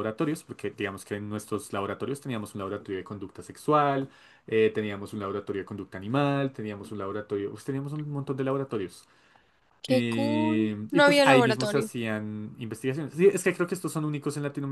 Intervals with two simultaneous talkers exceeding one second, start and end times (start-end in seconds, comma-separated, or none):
9.9-11.9